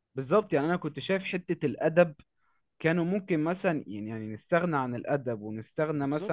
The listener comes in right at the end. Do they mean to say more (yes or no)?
no